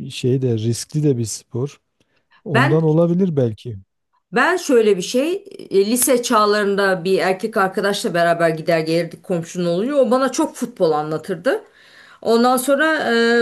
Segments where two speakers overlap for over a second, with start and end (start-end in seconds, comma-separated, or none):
none